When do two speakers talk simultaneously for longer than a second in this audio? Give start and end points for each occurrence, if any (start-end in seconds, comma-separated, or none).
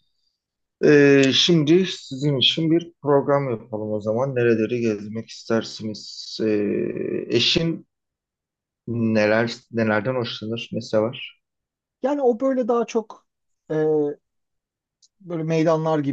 none